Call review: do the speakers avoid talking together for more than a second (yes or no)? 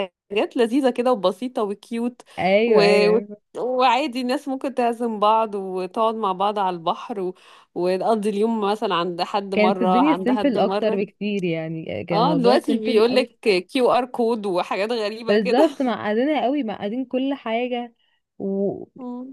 no